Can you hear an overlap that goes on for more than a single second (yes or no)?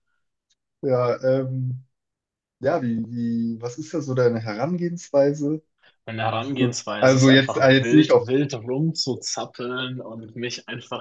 yes